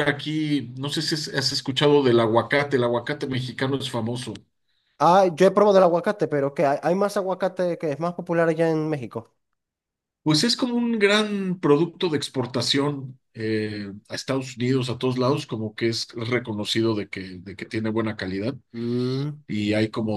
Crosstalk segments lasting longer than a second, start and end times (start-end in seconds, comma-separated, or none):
none